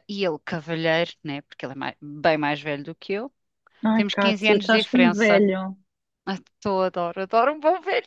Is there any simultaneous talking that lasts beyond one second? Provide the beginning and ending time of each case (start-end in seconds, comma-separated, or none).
3.9-5.4